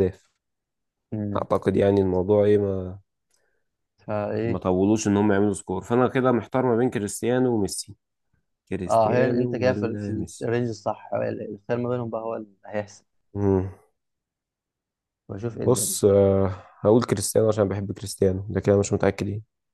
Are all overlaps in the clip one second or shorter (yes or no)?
no